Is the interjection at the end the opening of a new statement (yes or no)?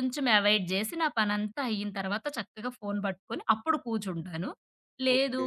no